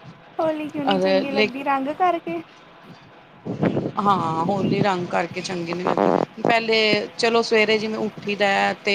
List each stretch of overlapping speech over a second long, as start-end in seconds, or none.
none